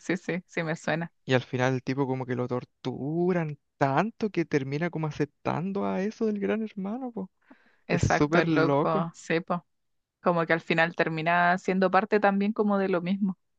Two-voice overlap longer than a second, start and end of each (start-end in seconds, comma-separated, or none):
7.9-9.1